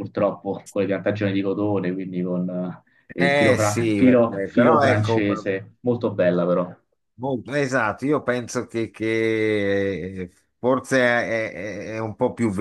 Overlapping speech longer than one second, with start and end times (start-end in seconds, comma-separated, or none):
3.2-5.5